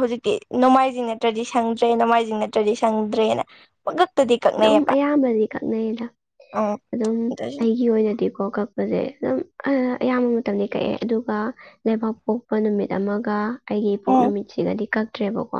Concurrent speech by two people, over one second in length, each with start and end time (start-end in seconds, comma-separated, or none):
none